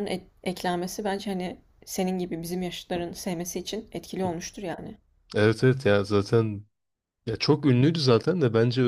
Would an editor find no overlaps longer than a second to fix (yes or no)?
yes